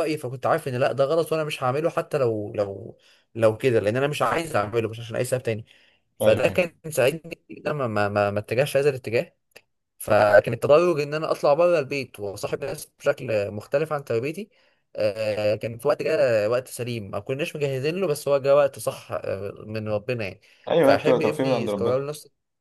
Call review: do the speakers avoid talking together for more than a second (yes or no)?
no